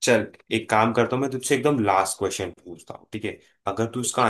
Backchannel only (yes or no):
yes